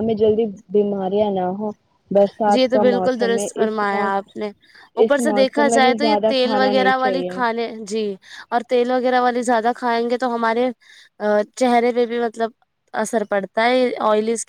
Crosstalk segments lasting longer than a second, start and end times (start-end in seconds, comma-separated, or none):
2.5-4.2, 5.0-7.4